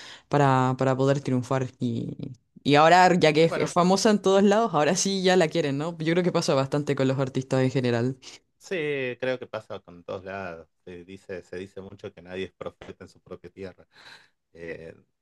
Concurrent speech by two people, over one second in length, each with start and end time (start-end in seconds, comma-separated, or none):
none